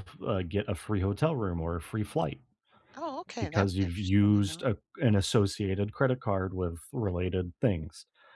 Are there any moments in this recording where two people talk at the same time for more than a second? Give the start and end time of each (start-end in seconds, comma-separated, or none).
3.4-4.7